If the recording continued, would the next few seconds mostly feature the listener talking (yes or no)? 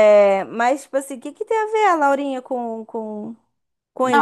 yes